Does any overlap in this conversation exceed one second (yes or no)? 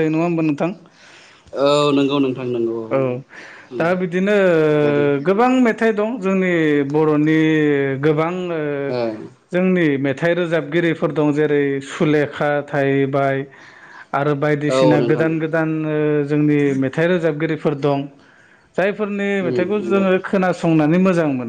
no